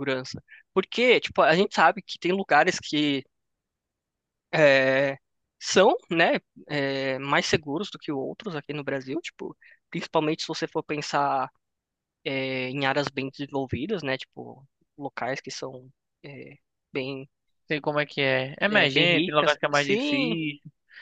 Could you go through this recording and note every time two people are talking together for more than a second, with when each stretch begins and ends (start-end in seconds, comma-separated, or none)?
18.7-20.3